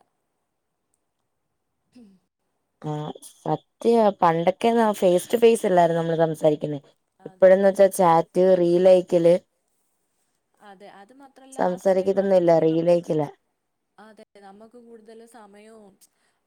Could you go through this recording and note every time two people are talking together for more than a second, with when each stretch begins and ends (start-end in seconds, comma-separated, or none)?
11.6-13.1